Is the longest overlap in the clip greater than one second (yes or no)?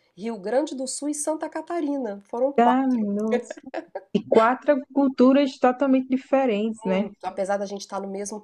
no